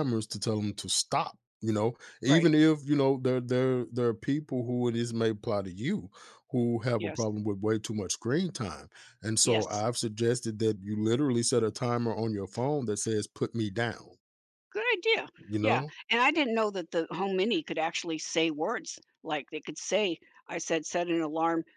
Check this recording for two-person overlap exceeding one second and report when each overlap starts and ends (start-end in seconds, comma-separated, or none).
none